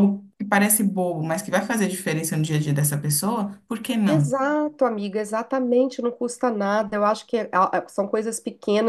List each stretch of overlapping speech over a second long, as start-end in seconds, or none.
none